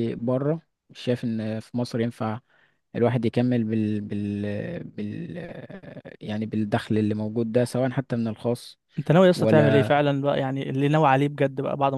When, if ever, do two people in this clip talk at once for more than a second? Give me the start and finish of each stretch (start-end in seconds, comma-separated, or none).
none